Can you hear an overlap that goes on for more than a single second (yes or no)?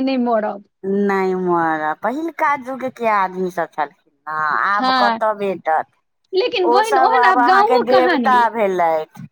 yes